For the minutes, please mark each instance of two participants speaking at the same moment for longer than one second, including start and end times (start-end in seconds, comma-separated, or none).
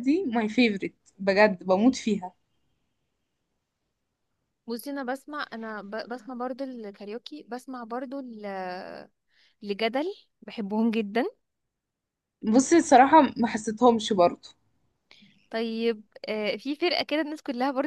none